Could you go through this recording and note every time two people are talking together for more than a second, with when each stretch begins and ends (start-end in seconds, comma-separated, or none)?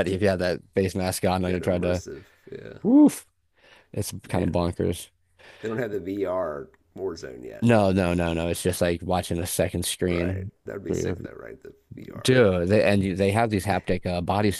none